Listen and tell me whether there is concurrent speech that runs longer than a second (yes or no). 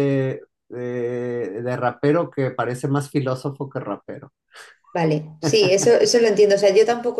no